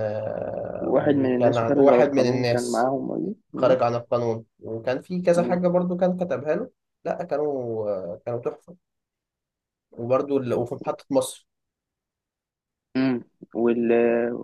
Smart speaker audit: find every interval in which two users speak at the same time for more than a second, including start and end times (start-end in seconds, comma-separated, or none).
0.8-2.9